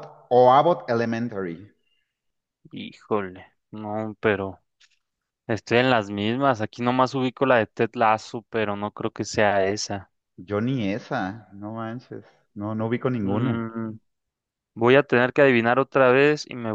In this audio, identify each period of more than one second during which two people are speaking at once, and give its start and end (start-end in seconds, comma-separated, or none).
none